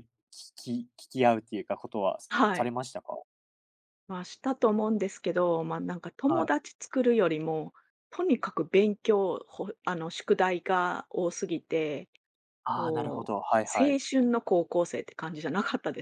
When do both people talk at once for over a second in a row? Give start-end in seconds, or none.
12.7-14.0